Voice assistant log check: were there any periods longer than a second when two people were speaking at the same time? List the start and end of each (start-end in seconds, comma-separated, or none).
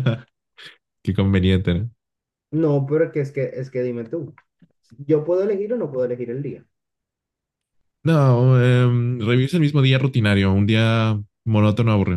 none